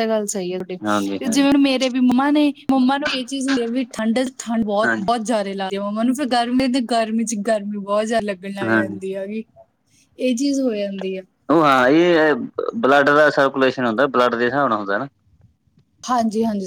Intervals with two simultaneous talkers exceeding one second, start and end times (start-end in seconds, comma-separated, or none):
none